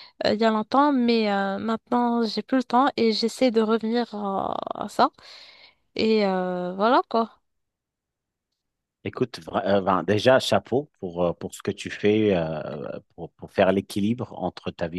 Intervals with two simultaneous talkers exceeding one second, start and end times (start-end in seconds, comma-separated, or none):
none